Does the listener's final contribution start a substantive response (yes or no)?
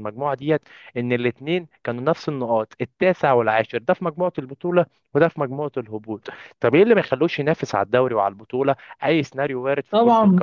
yes